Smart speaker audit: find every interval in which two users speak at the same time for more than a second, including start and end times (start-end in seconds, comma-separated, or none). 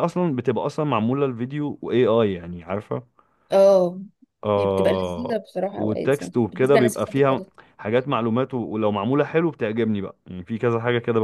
4.6-7.4